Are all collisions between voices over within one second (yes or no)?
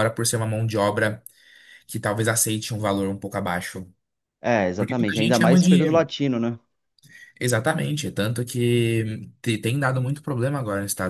no